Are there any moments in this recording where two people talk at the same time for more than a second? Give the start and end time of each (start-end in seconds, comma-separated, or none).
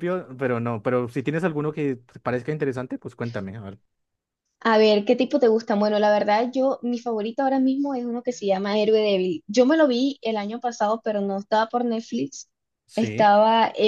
none